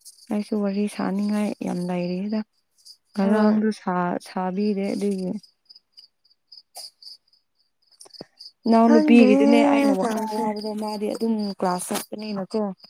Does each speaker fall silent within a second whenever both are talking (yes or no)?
no